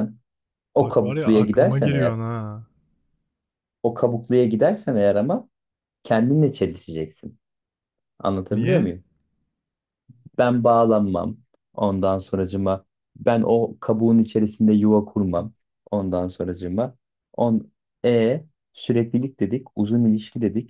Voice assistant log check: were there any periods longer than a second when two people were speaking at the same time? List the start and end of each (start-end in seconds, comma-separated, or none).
0.8-2.2